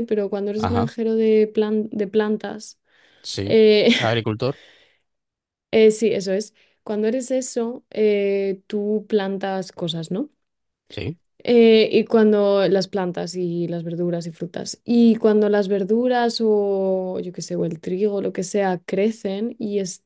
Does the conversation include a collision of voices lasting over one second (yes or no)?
no